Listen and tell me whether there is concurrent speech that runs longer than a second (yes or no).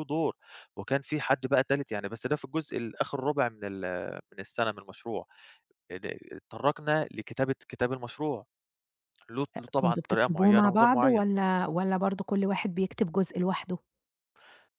yes